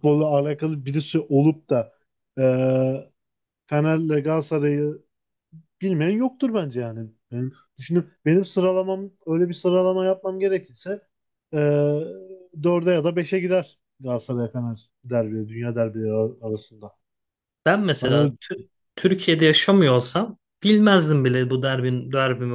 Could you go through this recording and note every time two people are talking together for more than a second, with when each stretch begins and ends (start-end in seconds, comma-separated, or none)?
none